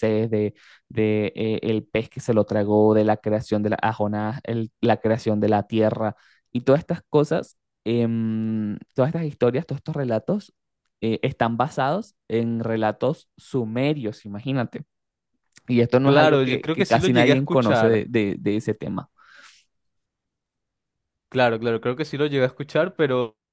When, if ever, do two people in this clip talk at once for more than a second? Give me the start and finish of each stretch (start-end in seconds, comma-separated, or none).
16.0-18.0